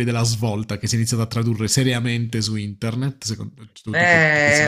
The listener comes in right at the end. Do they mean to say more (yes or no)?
yes